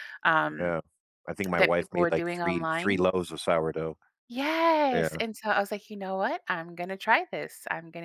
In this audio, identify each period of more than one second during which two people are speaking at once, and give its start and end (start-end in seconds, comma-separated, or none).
1.5-3.0